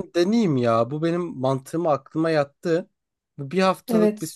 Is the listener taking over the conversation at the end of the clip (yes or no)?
no